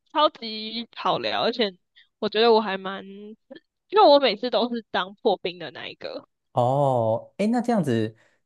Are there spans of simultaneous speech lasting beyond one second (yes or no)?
no